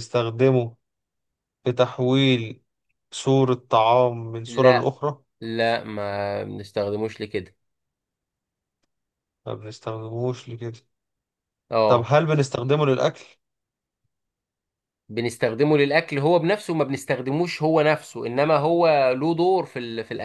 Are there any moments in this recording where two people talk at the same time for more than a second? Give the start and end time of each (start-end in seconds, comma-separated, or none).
none